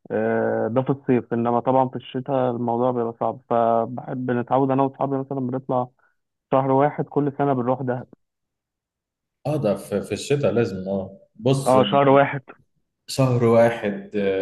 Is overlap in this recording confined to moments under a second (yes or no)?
yes